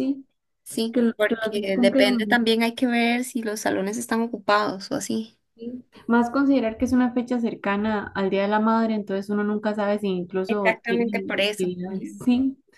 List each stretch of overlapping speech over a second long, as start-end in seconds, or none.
0.9-2.4, 10.5-12.2